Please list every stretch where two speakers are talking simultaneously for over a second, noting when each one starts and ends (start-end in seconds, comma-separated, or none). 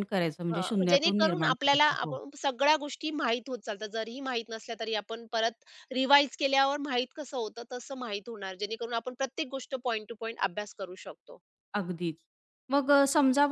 0.5-2.2